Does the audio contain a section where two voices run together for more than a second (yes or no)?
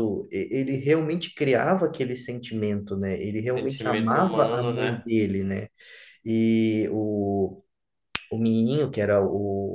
yes